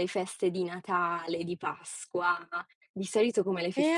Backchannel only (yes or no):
no